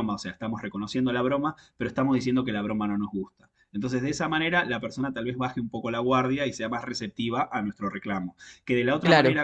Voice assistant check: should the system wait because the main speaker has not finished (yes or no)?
yes